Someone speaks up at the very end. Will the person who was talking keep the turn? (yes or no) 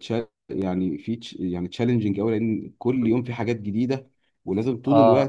yes